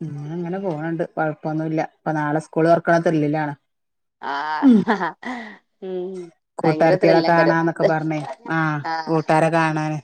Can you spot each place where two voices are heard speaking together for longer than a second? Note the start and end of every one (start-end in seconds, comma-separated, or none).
6.6-7.9